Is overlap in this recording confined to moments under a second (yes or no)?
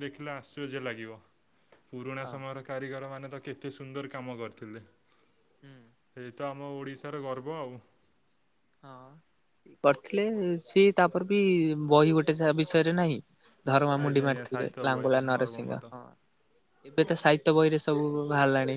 no